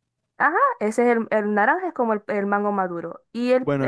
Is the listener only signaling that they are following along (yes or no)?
no